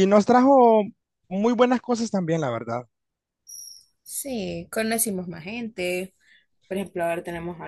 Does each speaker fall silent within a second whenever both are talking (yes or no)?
yes